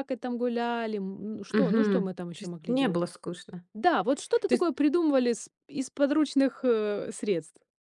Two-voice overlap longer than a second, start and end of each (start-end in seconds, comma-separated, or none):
1.5-3.0